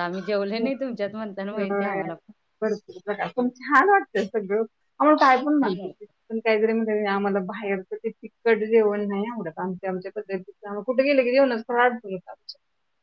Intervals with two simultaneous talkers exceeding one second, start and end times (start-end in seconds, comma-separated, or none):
0.6-2.0